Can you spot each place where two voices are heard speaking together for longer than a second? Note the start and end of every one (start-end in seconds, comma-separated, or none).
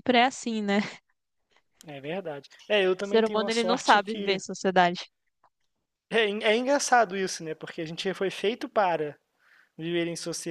3.0-4.4